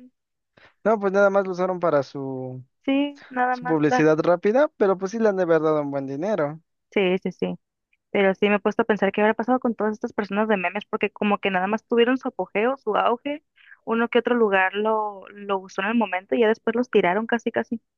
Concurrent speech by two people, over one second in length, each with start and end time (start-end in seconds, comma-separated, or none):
none